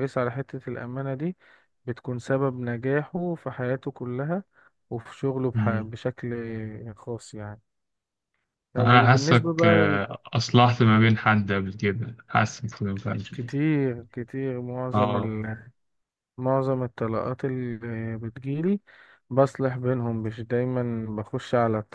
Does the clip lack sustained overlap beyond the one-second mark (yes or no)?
no